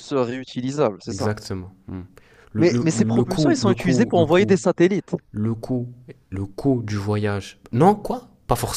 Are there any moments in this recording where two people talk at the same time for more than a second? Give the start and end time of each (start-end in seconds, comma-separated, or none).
2.6-4.6